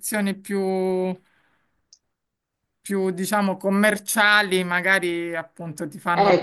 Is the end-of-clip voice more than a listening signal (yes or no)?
yes